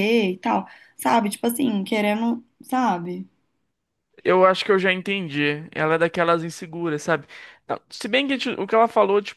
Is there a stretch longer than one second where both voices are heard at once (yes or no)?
no